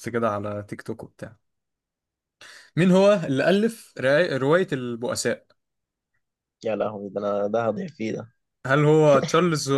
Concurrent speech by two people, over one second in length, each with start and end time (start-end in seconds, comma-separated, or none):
none